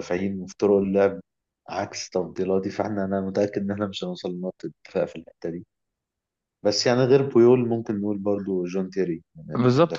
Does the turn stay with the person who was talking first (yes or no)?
no